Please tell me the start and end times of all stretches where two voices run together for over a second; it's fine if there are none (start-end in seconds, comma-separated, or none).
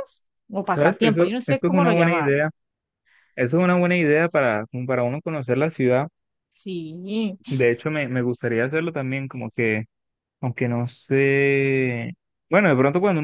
0.7-2.4